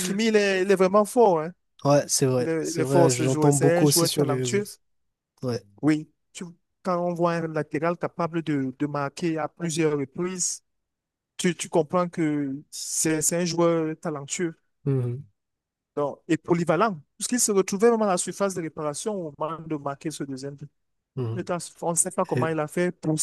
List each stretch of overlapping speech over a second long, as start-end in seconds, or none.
2.4-4.6